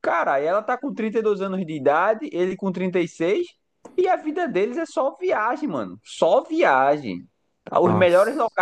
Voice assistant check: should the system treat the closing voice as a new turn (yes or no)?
no